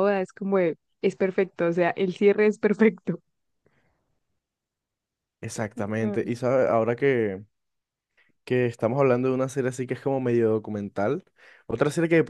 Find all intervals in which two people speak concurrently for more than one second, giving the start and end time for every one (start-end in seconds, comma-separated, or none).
none